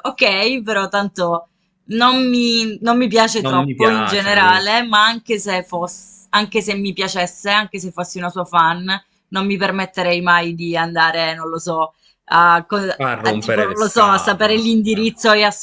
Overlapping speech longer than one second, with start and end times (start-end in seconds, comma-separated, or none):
3.4-4.7, 13.2-14.7